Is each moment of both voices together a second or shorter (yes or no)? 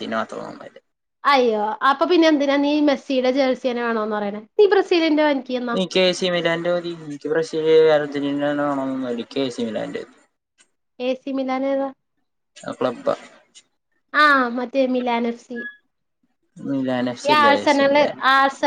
yes